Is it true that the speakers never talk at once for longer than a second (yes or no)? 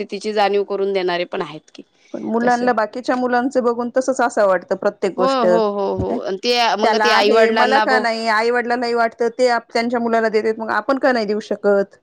yes